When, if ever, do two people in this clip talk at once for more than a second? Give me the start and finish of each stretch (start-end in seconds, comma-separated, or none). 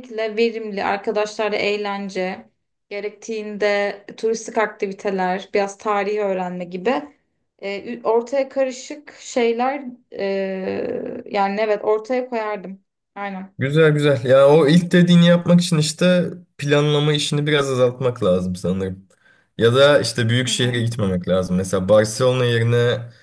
none